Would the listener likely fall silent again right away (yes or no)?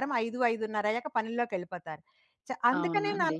yes